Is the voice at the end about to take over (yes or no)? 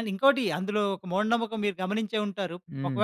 no